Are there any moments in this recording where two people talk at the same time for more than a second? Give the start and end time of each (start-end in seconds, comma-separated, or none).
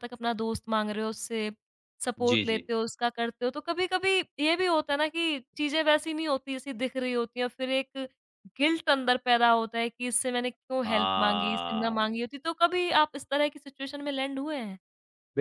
10.8-12.2